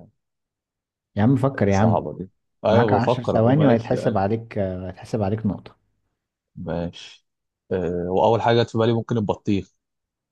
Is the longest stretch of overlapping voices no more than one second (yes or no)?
no